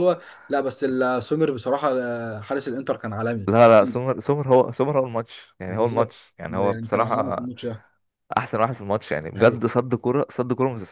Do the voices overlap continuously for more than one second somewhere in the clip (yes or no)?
yes